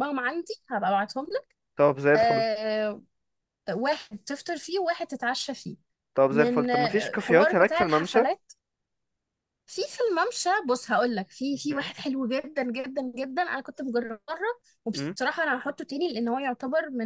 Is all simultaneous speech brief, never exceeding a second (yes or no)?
no